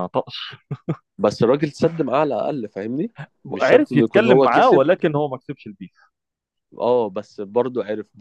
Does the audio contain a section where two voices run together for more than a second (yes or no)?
yes